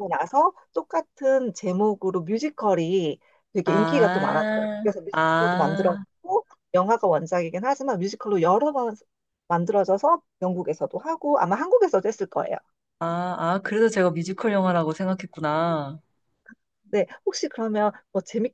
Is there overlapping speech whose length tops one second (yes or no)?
yes